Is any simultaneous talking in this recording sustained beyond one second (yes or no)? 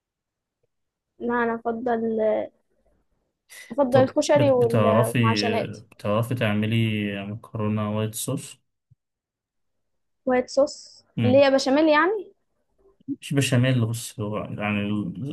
yes